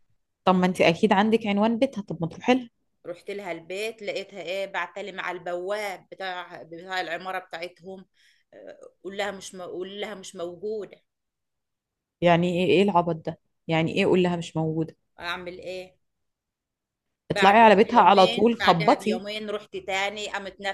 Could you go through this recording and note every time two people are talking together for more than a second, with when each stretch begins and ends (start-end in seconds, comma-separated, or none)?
17.3-19.2